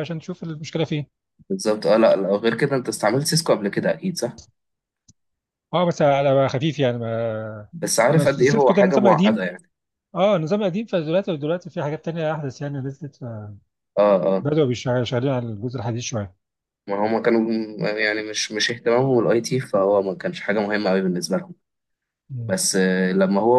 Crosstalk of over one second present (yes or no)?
yes